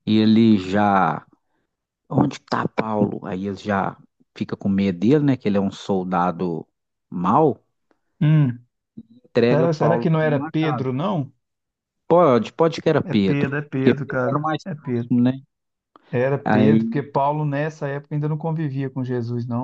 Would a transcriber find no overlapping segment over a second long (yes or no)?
no